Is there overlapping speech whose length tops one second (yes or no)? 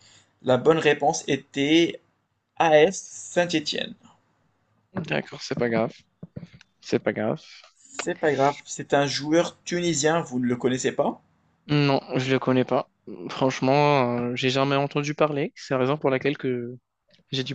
no